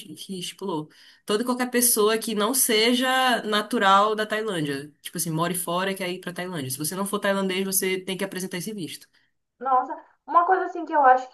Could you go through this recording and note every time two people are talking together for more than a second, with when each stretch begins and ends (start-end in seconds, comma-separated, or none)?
none